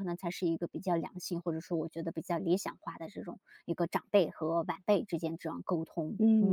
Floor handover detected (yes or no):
yes